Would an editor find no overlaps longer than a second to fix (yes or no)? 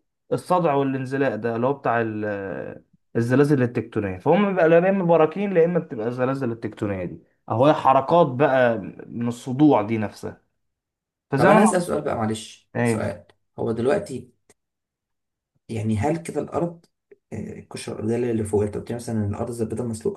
yes